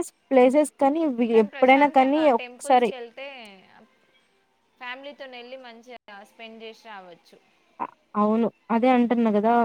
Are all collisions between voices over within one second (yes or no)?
no